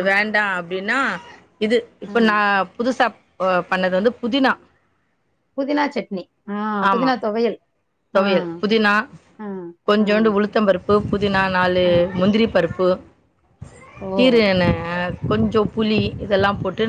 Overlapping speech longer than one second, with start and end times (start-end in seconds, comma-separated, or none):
none